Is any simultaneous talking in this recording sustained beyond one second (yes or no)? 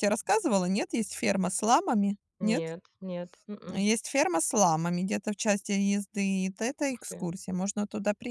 no